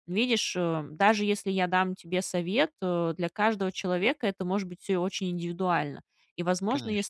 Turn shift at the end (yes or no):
no